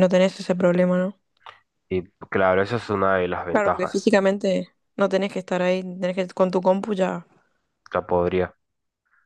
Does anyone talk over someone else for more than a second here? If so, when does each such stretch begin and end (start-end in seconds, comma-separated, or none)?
none